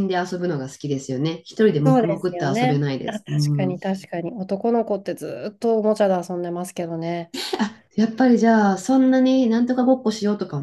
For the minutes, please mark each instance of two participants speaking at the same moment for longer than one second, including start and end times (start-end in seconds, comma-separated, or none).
1.8-3.8